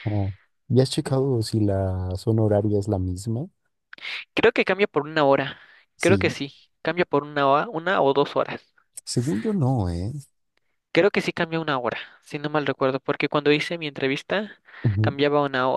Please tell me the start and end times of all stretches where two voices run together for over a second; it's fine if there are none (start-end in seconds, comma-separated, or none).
none